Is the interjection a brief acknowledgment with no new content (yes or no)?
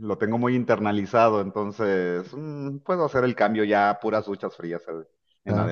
no